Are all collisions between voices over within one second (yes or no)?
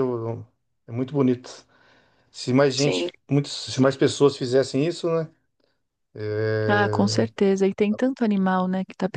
yes